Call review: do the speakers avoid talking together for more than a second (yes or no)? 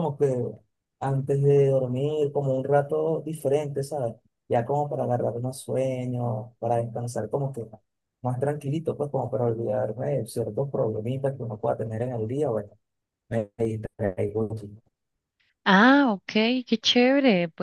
yes